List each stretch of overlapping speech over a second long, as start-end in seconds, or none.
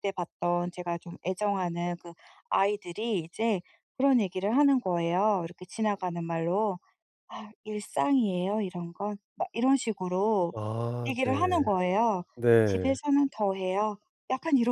none